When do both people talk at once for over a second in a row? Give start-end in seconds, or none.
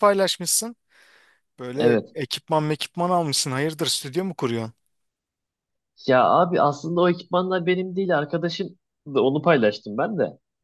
none